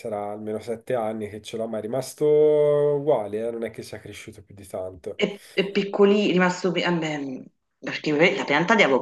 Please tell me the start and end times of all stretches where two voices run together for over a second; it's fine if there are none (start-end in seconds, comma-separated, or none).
none